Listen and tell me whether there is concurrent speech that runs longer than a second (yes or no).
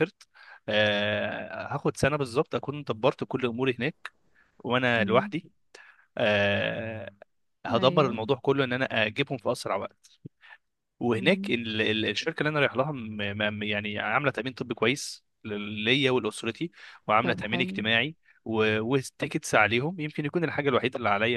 no